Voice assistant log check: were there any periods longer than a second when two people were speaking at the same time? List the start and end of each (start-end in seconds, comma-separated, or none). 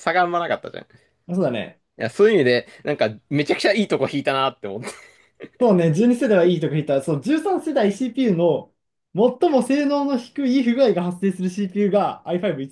none